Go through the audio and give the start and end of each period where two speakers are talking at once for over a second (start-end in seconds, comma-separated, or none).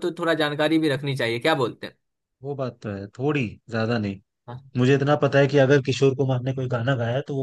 none